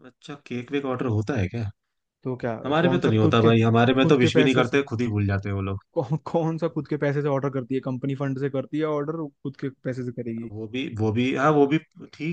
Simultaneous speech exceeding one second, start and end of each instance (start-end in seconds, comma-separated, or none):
2.6-4.8